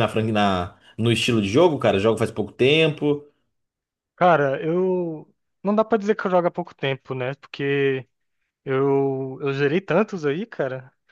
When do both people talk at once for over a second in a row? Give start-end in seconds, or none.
none